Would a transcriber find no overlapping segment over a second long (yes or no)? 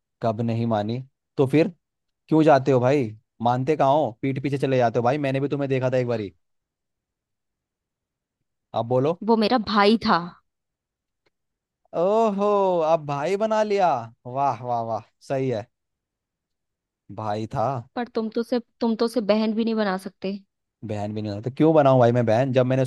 yes